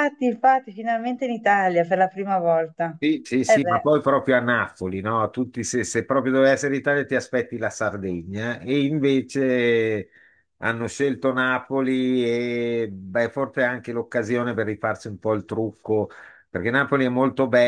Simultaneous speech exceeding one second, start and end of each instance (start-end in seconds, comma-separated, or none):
none